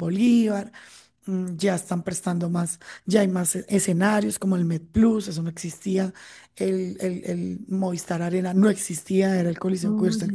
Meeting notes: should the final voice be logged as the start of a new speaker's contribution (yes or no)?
no